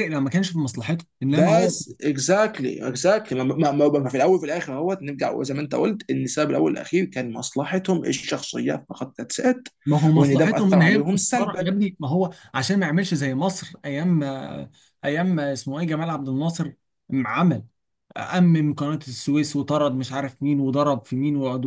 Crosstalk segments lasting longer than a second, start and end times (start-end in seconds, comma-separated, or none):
10.2-11.7